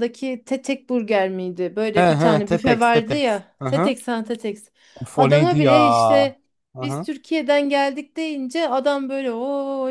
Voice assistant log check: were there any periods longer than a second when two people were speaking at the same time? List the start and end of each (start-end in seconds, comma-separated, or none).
1.9-3.9